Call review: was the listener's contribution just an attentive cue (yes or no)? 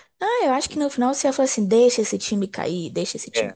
no